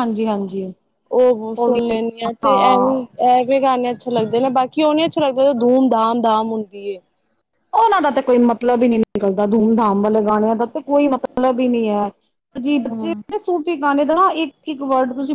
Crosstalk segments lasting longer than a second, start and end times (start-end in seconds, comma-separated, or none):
none